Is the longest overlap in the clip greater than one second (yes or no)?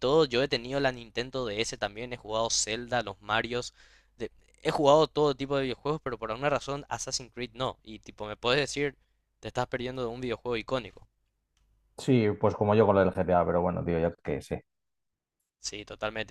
no